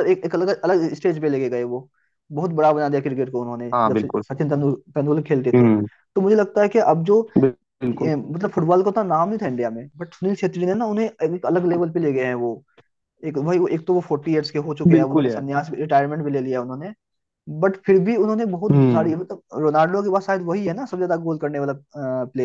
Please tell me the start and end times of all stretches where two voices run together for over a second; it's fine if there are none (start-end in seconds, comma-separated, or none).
none